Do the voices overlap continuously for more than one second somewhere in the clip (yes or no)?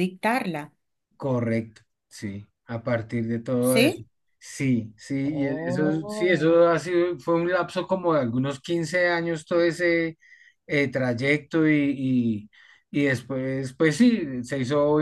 yes